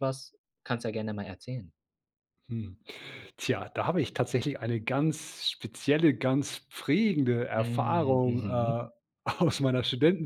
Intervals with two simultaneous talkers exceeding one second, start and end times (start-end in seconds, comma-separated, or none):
7.5-8.8